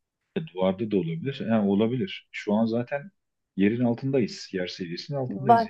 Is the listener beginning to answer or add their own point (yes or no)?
yes